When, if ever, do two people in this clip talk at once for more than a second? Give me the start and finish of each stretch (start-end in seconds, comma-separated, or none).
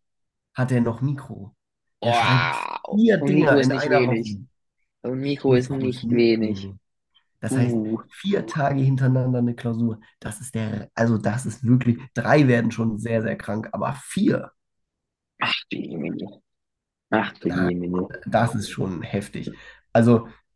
2.0-4.3, 5.5-6.7